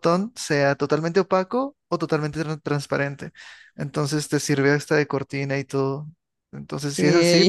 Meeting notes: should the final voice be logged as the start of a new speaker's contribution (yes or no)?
no